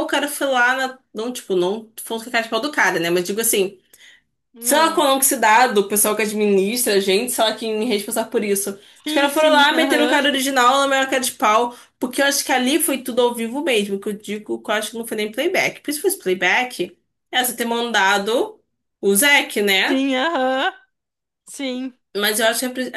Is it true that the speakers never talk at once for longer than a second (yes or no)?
no